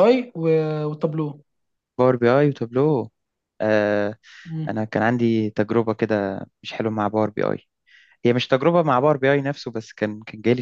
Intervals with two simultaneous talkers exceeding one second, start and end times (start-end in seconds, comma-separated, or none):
none